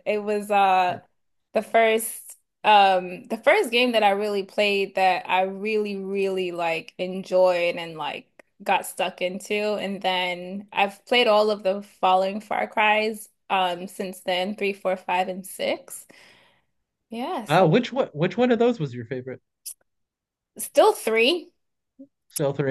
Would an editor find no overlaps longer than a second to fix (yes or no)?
yes